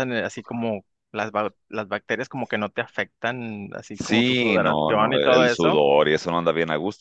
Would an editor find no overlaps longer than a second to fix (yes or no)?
no